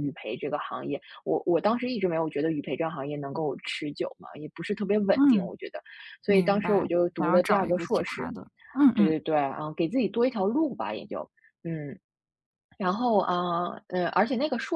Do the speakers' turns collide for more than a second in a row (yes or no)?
yes